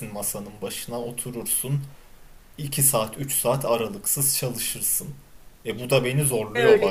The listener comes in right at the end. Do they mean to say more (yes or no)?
yes